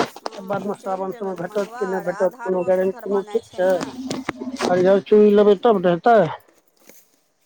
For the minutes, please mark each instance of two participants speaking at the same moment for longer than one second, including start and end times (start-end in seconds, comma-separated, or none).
0.5-3.7